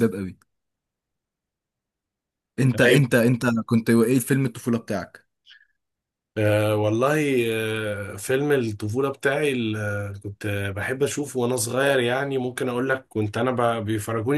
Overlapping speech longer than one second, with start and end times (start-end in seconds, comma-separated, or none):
none